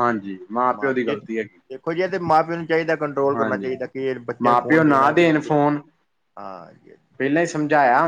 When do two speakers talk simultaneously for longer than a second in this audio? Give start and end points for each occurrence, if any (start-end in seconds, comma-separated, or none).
4.4-5.7